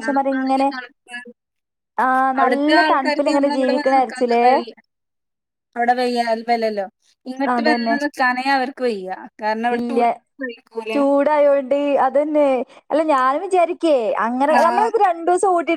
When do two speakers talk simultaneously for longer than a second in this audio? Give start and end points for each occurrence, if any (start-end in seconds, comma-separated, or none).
2.4-4.5